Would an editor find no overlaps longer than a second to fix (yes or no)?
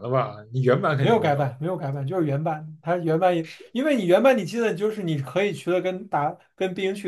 yes